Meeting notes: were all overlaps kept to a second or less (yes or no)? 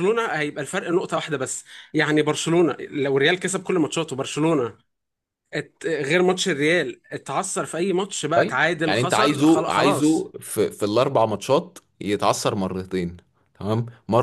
no